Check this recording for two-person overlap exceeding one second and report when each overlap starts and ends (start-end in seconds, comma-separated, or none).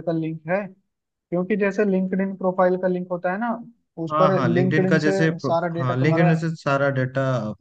4.1-6.3